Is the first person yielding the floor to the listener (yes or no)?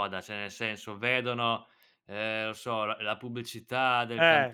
no